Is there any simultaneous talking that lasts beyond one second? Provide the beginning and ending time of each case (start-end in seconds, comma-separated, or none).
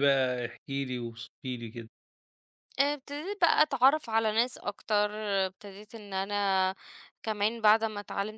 none